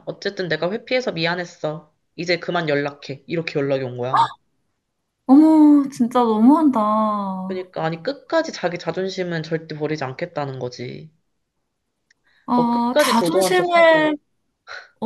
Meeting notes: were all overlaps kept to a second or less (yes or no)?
no